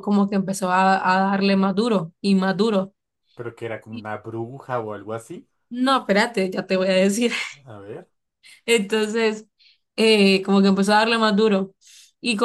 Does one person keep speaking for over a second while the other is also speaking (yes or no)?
no